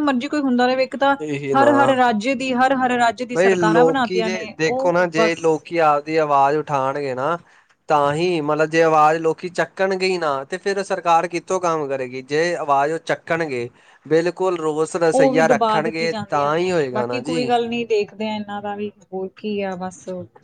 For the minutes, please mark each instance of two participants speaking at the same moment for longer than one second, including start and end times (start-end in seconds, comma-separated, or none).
15.1-17.5